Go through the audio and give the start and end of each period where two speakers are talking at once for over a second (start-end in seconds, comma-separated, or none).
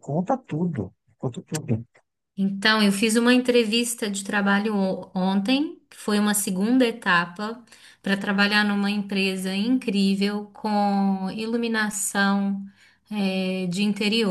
none